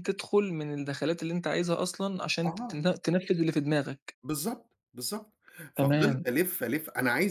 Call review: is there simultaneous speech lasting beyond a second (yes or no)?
no